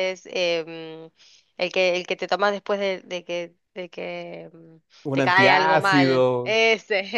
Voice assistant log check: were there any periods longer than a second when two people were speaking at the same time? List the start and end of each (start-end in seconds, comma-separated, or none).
5.0-6.6